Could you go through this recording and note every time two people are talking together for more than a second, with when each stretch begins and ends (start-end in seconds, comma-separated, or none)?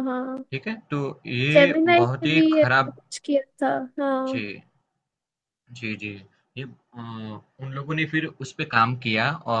1.5-3.0